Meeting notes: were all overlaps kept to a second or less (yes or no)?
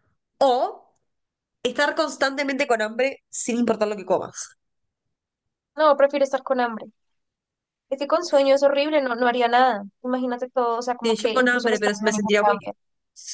no